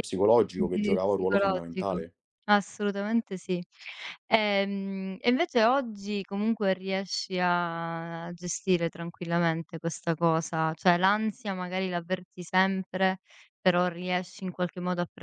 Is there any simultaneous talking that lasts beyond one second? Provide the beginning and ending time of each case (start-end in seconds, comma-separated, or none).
0.5-2.0